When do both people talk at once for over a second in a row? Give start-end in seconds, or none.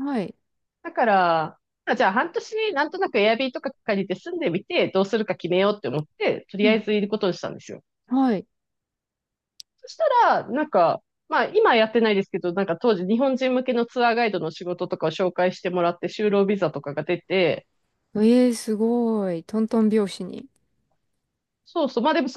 none